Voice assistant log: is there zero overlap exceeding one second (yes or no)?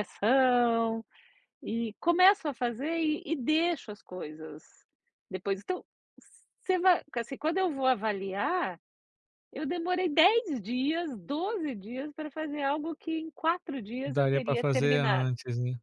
no